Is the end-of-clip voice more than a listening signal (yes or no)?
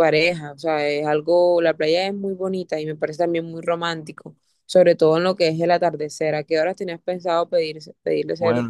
yes